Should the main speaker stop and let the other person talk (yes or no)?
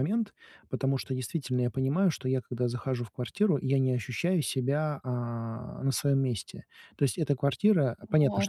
no